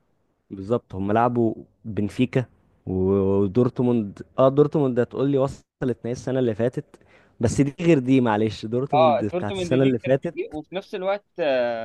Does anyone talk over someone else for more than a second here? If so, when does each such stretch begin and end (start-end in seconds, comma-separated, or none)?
8.9-10.3